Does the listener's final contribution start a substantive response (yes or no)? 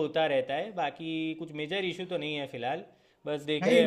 no